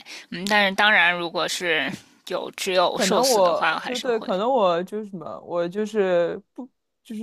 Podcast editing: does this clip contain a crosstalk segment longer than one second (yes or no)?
yes